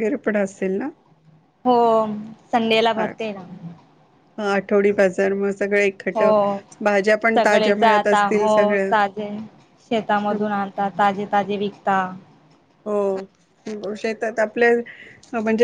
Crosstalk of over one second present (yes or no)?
no